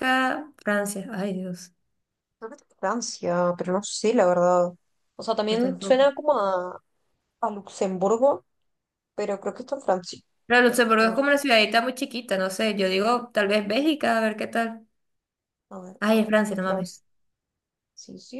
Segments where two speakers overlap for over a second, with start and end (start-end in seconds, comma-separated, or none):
none